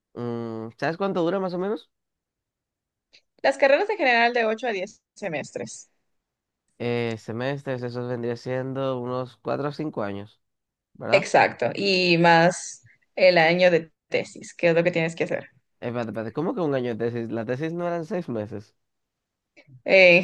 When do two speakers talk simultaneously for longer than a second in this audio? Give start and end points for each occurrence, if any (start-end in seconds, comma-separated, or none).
none